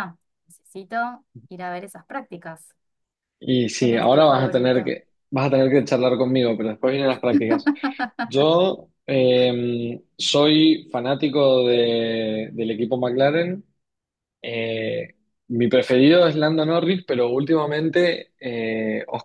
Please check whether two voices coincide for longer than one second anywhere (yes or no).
yes